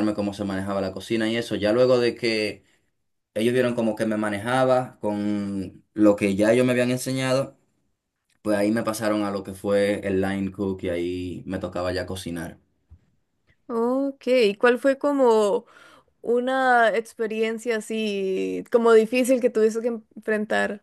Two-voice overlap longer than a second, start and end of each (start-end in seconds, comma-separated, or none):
none